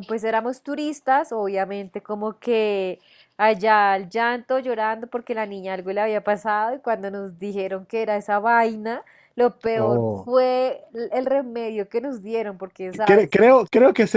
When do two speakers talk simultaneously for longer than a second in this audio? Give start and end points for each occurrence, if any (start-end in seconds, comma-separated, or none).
none